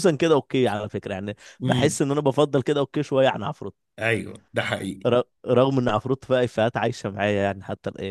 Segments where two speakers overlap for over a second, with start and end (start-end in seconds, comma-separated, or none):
none